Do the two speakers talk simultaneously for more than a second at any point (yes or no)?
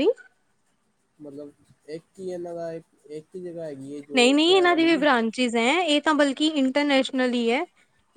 no